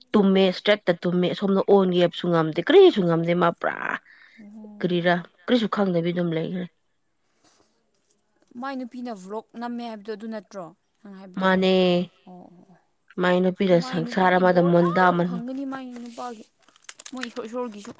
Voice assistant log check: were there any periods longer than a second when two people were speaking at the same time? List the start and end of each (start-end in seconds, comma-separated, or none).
13.6-15.4